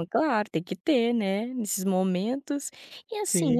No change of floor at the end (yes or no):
yes